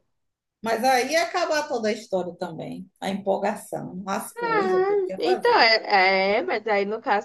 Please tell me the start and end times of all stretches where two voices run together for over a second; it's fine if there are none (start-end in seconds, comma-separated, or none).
4.4-5.7